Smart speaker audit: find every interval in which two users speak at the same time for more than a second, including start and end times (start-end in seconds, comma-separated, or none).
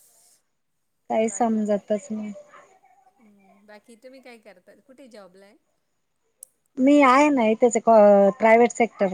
none